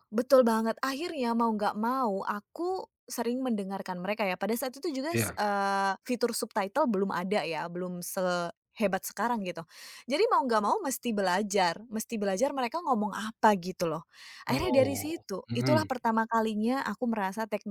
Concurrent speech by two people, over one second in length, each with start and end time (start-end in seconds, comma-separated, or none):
14.5-15.9